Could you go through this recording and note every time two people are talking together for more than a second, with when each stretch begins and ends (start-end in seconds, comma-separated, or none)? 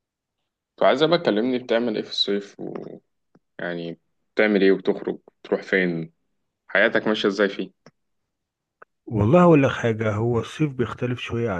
none